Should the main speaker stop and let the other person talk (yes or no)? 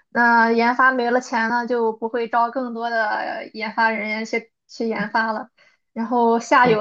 no